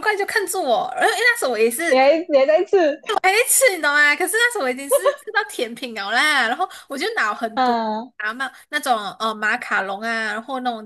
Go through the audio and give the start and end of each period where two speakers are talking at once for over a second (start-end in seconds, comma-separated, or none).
none